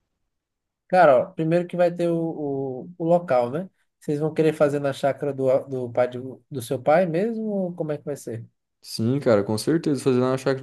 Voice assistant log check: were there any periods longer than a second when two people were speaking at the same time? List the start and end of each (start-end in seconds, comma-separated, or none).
none